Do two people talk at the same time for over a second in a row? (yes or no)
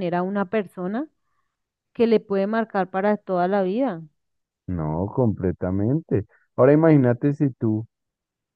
no